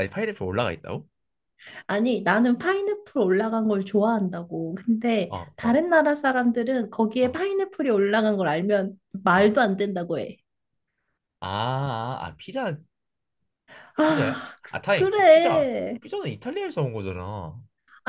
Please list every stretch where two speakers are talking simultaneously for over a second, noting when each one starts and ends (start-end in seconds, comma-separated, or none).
14.0-16.0